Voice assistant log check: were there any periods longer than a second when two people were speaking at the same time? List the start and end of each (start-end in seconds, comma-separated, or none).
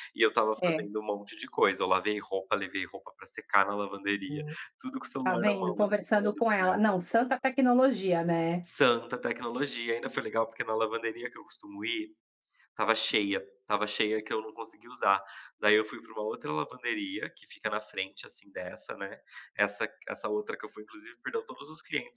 5.2-7.0